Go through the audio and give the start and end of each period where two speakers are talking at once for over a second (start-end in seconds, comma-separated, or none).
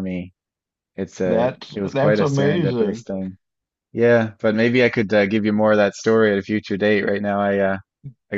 1.2-3.0